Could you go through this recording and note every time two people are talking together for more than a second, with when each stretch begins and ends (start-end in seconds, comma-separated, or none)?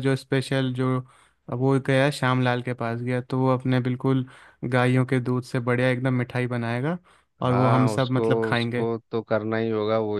7.5-8.9